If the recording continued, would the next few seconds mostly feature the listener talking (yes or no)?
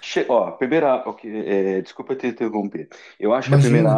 no